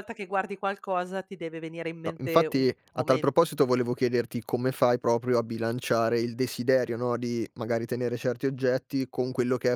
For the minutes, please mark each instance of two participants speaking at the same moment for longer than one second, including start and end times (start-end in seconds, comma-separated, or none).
2.1-3.5